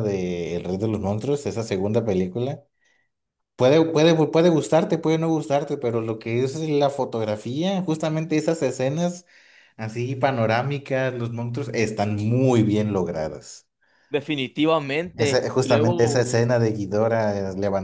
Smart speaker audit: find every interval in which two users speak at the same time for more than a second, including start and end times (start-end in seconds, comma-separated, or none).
15.2-16.5